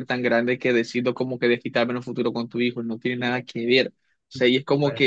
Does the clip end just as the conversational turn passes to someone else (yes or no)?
no